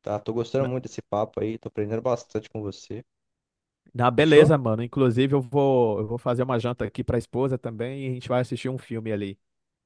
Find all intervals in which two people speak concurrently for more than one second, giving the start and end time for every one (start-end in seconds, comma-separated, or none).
none